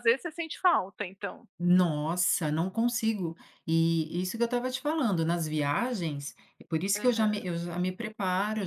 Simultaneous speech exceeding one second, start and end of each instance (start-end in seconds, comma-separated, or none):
none